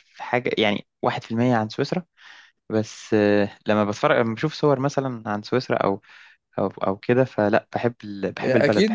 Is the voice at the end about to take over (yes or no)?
yes